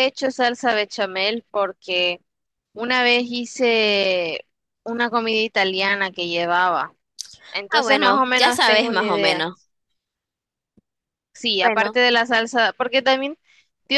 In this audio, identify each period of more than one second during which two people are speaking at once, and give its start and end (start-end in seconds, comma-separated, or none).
7.7-9.5